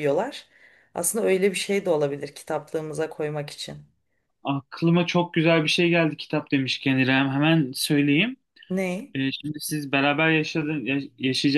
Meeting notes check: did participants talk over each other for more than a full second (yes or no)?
no